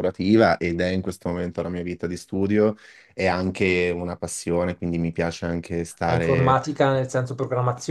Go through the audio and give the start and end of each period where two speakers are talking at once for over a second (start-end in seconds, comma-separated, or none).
none